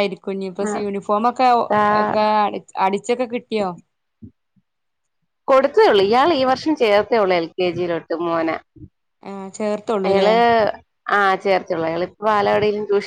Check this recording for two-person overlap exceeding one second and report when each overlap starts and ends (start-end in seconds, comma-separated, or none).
none